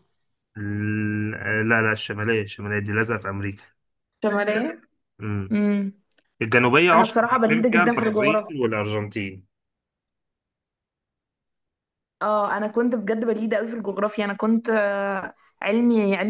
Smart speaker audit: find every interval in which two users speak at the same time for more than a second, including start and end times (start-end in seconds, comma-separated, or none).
6.9-8.5